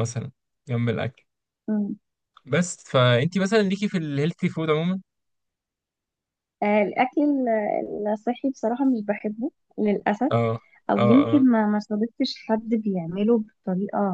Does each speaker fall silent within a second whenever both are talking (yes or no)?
yes